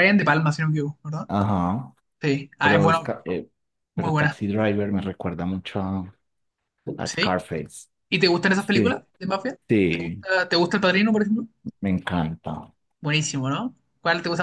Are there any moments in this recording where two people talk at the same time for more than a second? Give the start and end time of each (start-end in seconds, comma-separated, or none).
none